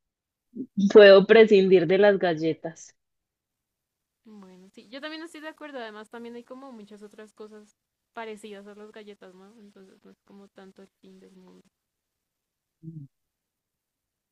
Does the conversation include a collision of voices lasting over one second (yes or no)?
no